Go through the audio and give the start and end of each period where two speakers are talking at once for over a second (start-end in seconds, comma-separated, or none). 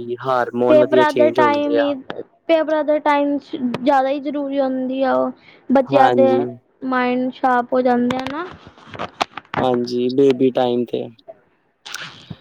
0.7-1.9